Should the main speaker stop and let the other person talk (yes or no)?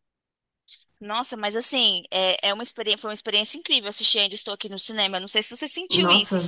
yes